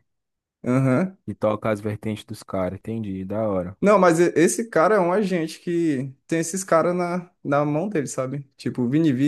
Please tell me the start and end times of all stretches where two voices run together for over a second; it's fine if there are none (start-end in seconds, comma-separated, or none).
none